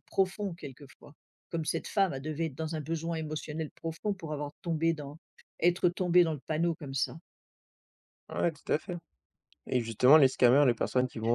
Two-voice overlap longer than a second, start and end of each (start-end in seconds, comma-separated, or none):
none